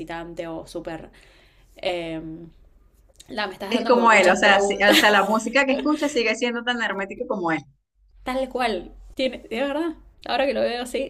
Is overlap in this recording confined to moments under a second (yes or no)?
no